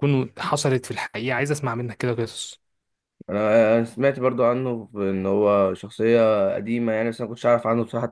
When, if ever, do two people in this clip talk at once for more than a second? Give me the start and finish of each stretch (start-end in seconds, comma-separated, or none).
none